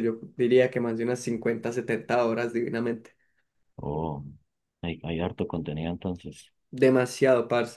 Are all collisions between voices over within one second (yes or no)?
yes